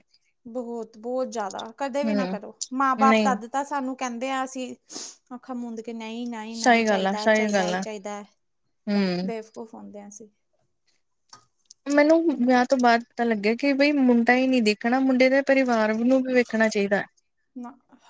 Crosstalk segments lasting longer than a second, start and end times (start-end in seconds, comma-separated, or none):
6.6-7.8